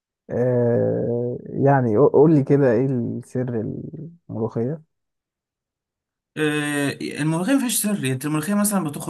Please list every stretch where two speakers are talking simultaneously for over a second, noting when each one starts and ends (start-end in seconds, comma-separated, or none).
none